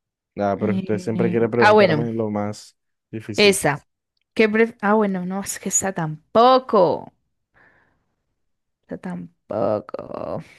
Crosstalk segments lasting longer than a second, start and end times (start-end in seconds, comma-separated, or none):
0.6-2.1